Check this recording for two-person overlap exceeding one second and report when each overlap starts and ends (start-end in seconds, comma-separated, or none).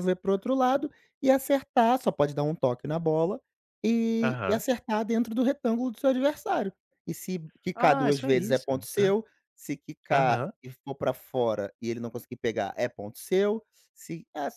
7.8-9.1